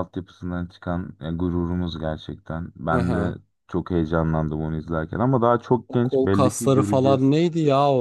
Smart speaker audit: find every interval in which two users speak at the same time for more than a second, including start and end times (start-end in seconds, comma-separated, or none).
5.9-7.3